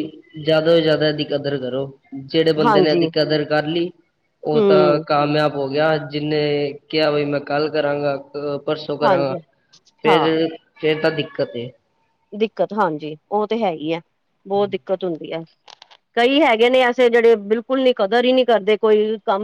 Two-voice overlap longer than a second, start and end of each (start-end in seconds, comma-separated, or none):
none